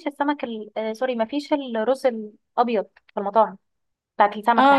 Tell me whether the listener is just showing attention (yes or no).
no